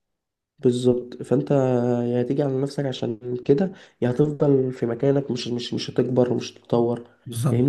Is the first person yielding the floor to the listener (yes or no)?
yes